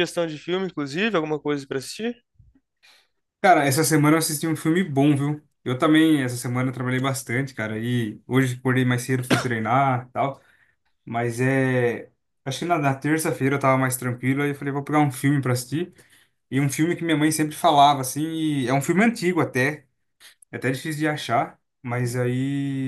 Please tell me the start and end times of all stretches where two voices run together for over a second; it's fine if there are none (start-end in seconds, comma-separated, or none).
none